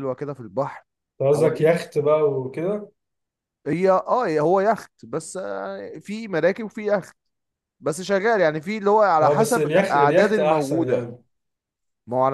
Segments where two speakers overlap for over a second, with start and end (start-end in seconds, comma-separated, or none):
9.2-11.1